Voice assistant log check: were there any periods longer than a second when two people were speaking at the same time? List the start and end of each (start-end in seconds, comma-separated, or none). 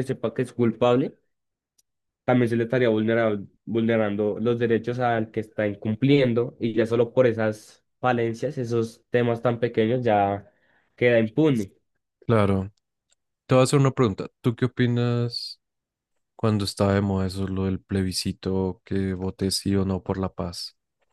none